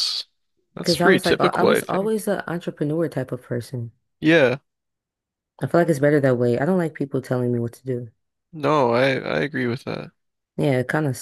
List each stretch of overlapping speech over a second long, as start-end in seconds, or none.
0.8-2.2